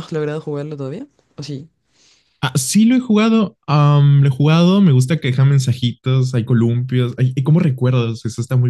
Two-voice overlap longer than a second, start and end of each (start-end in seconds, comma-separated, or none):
none